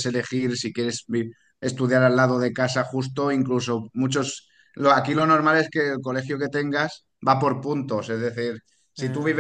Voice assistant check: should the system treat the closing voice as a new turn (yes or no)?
no